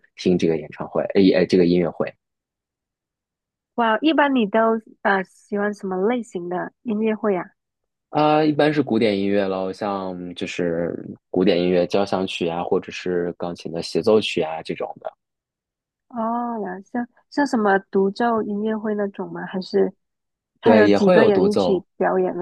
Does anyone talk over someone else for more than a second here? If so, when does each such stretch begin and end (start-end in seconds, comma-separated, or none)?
20.6-21.9